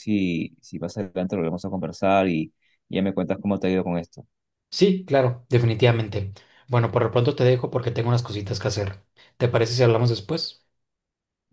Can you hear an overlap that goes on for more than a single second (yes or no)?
no